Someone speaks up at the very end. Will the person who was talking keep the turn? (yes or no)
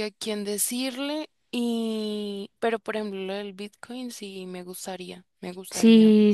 no